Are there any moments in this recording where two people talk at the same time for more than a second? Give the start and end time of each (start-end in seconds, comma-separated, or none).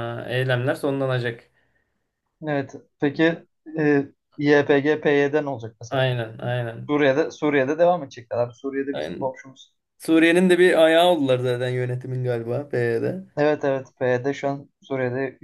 none